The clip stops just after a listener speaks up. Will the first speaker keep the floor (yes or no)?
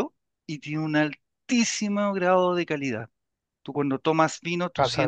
yes